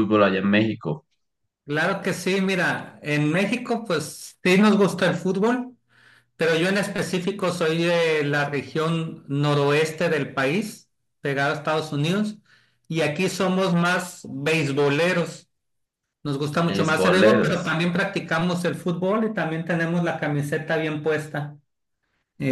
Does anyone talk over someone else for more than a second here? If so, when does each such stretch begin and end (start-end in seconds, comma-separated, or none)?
16.6-17.8